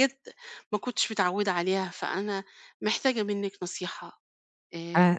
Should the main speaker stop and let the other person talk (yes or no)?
yes